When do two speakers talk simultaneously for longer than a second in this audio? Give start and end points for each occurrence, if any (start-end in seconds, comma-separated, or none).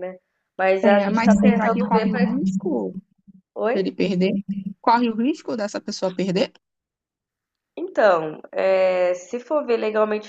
0.8-2.2